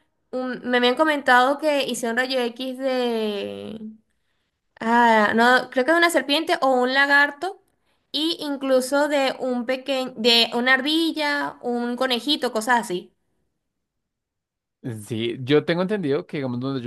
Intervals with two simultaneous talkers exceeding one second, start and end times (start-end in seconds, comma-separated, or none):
none